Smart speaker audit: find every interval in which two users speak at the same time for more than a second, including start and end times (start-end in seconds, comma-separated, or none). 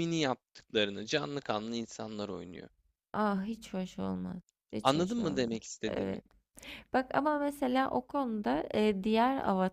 4.8-6.2